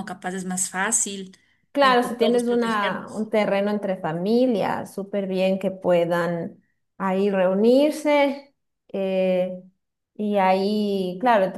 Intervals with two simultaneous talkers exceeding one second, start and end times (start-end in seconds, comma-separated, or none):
1.8-3.3